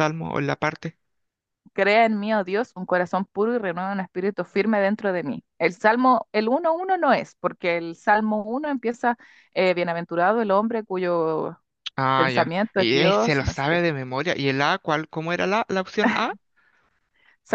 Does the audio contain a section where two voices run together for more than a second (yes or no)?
yes